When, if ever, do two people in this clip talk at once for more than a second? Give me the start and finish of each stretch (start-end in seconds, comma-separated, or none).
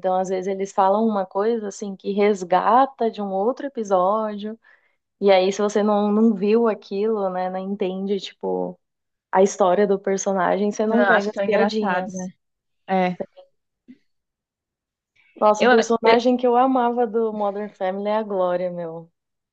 10.9-12.3